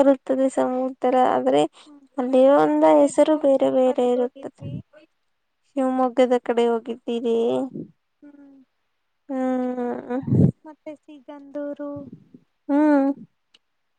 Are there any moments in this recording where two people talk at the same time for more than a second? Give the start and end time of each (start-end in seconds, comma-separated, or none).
2.2-4.6